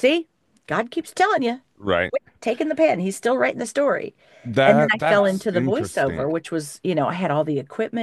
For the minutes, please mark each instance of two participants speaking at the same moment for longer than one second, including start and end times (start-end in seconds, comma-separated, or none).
4.7-6.3